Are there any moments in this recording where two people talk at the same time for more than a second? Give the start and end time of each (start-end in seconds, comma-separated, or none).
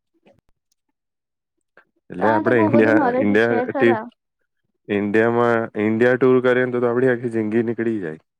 2.2-4.0